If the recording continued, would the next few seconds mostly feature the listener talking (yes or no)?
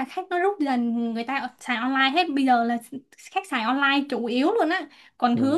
no